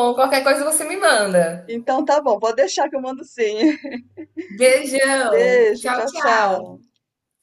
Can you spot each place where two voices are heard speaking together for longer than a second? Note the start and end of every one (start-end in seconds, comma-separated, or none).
5.3-6.7